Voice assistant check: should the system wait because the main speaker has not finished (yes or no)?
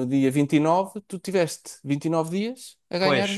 no